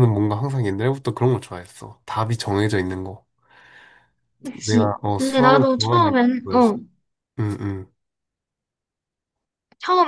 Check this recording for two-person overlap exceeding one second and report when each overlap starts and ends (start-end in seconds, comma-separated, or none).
4.5-6.7